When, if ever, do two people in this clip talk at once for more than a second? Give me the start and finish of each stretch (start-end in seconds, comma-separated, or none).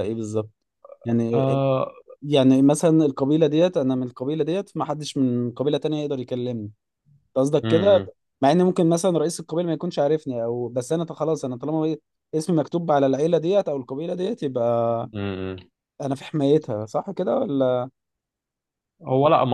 none